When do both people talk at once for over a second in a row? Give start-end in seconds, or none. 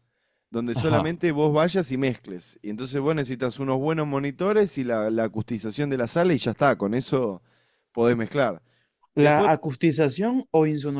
none